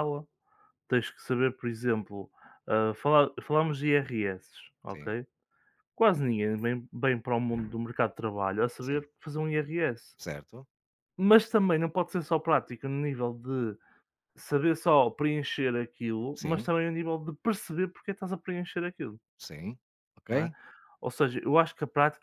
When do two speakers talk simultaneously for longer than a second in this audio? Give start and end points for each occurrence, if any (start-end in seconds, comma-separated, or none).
none